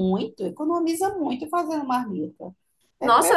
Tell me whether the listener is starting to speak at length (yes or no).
yes